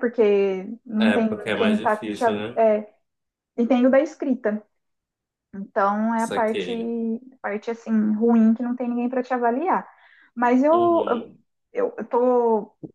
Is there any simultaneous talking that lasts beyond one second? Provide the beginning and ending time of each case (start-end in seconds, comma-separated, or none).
1.0-2.4